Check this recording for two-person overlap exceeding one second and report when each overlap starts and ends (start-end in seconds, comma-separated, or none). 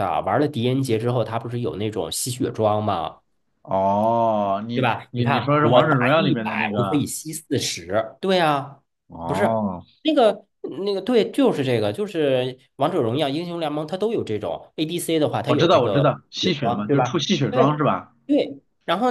4.7-7.0, 15.5-17.7